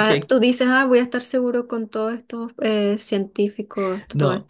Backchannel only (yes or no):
no